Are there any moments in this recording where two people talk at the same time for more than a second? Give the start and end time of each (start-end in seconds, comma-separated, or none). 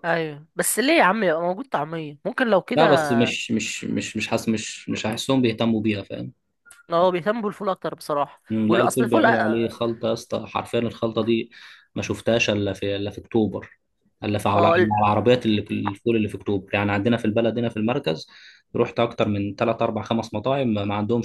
8.5-9.8